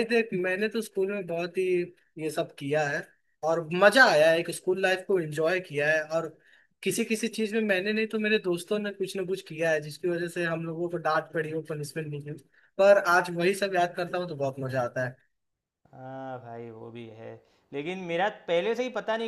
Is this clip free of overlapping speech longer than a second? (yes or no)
yes